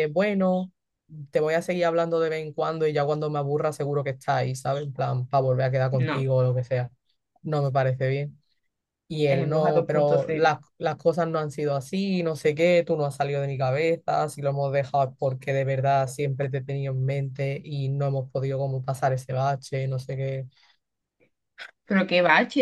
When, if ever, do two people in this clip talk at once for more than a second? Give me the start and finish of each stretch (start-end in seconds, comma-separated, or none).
9.3-10.5